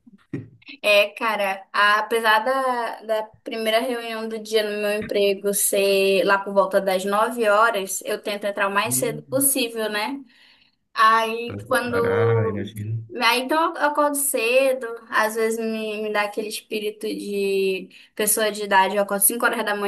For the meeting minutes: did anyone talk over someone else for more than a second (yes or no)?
yes